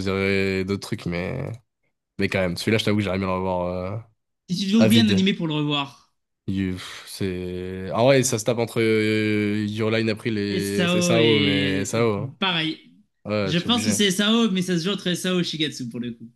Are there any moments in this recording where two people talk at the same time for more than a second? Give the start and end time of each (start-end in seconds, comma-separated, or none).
10.5-12.0